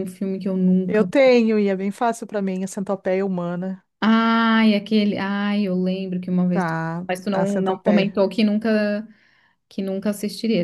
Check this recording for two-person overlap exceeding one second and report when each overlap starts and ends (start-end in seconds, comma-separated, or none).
6.5-8.2